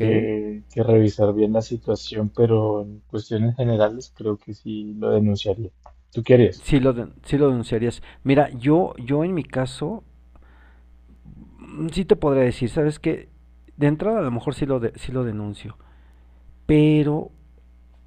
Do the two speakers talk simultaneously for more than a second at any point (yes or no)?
no